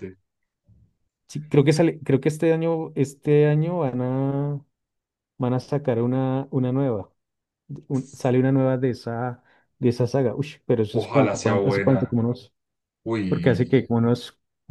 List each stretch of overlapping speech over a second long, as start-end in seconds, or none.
10.9-12.2